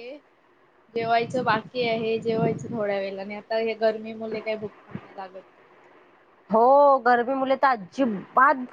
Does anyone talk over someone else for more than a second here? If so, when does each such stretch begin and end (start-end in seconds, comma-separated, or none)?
none